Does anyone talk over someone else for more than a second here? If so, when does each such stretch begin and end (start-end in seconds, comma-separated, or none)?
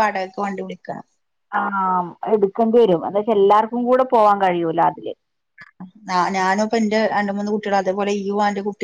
none